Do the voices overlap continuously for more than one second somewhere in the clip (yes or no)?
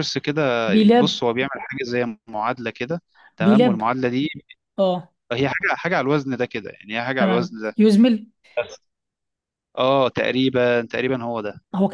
no